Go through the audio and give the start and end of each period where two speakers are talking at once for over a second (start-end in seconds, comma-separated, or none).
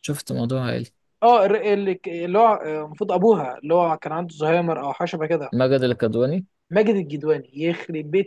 none